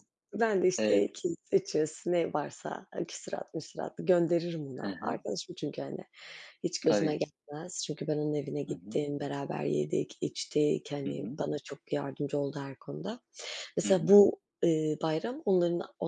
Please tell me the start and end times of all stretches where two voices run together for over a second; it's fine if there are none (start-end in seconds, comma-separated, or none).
none